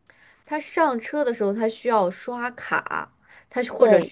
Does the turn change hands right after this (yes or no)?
no